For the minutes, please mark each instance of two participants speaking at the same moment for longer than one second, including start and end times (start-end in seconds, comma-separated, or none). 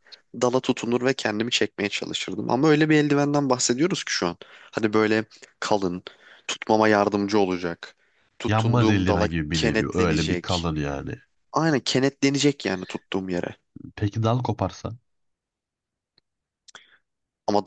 8.5-10.7